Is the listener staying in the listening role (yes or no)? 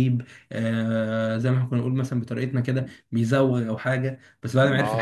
yes